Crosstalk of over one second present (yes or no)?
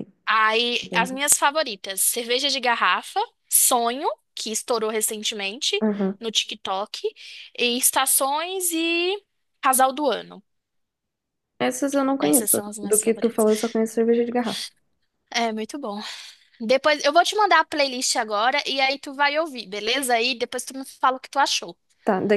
yes